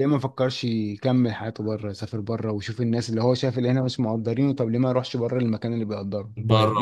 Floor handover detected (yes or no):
yes